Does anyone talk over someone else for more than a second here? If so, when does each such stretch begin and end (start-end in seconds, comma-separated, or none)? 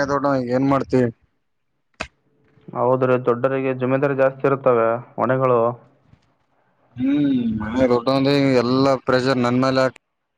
none